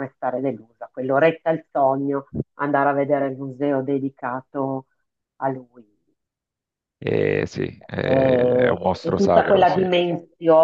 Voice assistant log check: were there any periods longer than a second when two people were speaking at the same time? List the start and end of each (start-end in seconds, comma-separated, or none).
8.0-9.8